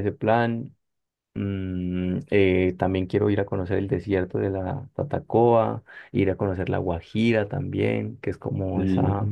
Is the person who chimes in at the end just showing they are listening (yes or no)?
yes